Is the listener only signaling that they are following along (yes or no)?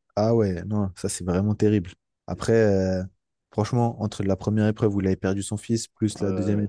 yes